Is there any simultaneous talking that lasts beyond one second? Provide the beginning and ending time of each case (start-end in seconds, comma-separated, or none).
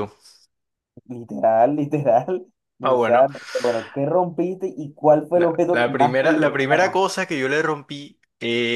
5.3-7.1